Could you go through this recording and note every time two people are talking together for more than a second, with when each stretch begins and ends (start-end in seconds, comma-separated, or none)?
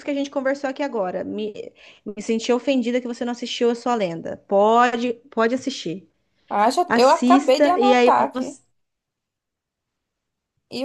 6.9-8.6